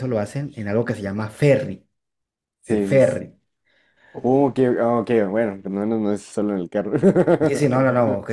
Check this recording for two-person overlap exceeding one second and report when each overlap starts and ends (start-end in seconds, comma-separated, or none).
none